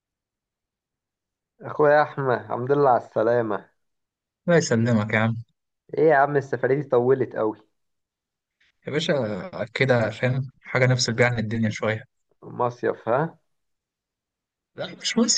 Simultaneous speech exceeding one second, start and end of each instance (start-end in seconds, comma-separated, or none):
none